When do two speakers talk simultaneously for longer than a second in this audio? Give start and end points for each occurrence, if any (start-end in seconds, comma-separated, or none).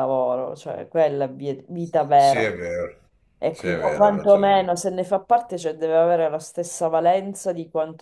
3.5-4.8